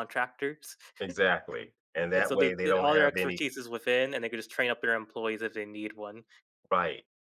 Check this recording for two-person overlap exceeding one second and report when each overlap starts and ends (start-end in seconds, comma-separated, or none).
2.1-3.4